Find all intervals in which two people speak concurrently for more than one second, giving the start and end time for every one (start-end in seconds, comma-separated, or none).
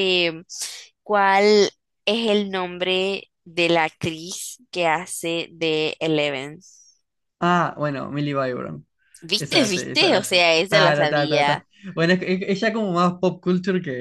9.4-11.7